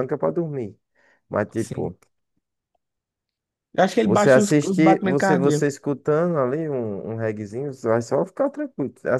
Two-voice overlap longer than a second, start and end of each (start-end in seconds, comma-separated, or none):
4.0-5.7